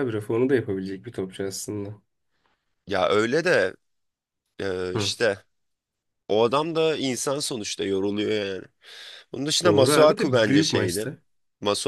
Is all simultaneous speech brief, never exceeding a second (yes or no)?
no